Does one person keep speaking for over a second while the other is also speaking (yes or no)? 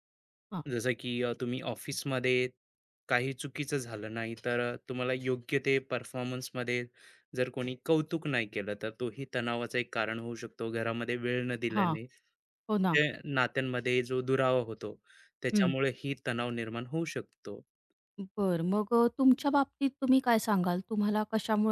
no